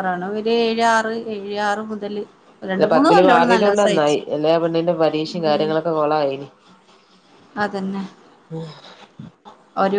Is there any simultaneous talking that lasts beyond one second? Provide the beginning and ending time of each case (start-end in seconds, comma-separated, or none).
2.7-4.2